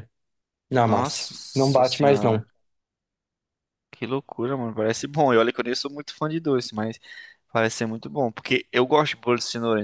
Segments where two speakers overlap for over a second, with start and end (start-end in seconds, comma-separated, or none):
0.8-2.4